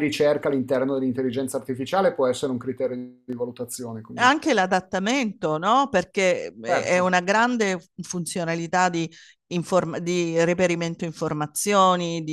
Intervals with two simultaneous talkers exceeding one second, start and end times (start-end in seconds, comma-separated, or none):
none